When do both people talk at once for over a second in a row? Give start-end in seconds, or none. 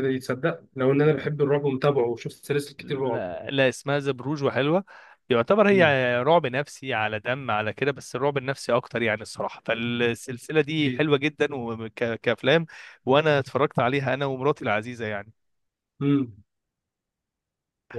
none